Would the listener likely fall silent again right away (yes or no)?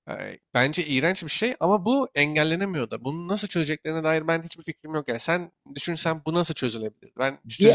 no